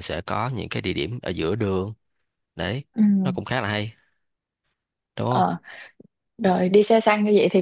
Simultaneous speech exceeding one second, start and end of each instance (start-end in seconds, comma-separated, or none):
none